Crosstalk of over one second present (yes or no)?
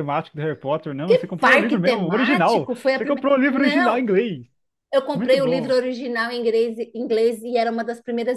yes